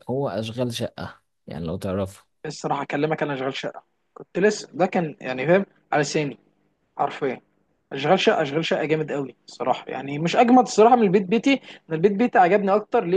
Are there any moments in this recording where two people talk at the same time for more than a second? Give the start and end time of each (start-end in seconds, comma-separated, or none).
none